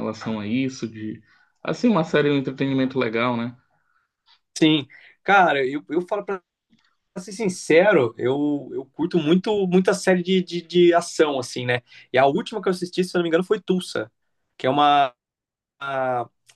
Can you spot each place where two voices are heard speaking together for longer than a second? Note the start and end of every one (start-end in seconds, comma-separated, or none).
none